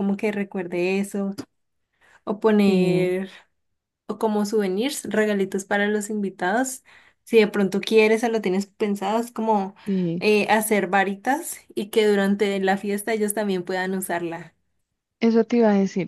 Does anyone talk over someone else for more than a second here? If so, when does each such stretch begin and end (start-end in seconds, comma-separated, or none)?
none